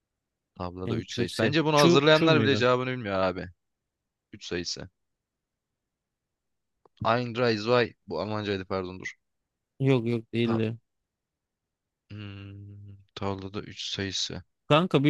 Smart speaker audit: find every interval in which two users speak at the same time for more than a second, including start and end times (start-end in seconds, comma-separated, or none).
0.8-2.6